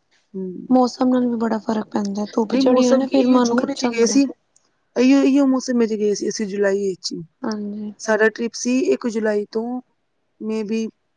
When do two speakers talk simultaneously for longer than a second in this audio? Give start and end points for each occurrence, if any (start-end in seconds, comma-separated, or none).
2.5-4.2